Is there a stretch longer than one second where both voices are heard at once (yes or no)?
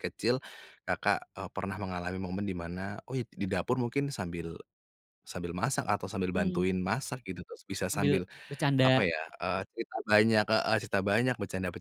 no